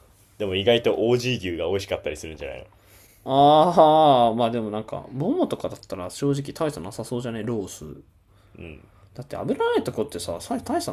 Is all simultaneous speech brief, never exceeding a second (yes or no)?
yes